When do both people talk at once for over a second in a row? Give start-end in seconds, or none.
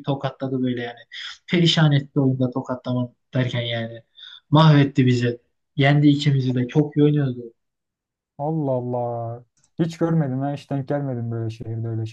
none